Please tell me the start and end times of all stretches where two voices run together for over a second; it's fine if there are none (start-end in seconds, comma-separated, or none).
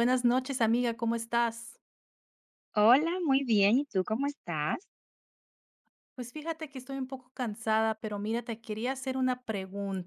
none